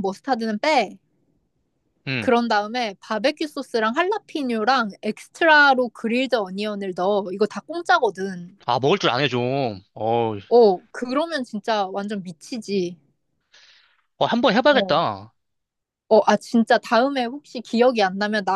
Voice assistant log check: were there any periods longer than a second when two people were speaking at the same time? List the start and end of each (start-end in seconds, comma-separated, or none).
none